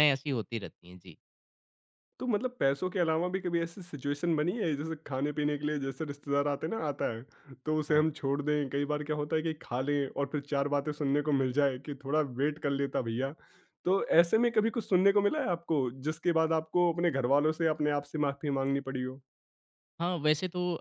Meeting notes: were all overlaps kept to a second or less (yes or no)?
yes